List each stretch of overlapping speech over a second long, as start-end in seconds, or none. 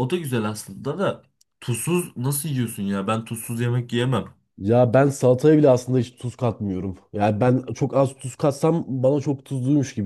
none